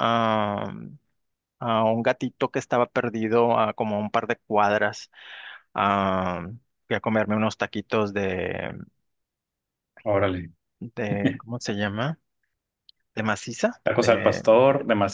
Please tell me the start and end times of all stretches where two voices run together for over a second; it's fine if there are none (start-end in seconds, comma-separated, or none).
none